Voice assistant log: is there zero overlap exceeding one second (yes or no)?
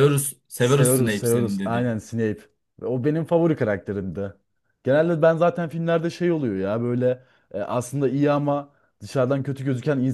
no